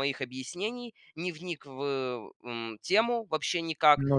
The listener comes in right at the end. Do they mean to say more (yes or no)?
no